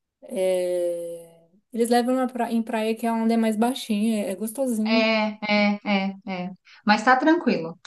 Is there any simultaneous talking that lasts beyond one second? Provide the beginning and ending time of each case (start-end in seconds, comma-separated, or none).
none